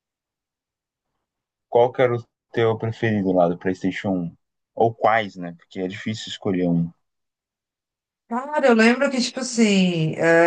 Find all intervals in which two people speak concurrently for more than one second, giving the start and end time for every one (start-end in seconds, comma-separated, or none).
none